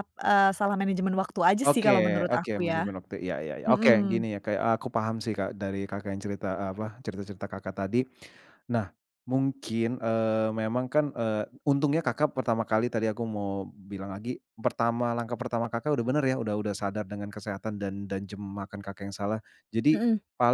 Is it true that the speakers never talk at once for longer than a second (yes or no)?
no